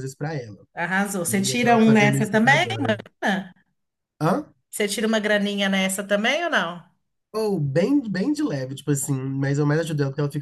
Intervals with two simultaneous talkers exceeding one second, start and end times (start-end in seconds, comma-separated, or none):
1.3-2.6